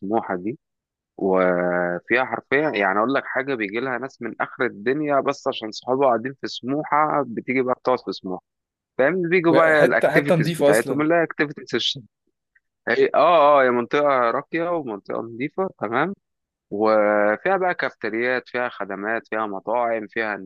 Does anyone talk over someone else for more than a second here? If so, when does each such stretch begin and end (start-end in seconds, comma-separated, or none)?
9.5-11.1